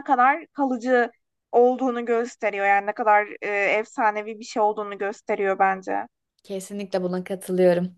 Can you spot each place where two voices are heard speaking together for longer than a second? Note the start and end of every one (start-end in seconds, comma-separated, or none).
none